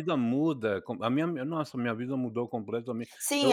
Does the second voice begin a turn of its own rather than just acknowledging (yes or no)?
yes